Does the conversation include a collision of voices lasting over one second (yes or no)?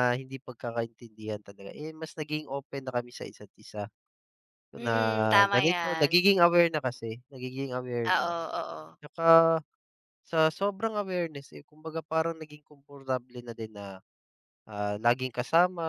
yes